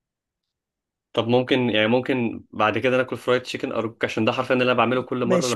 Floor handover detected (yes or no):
yes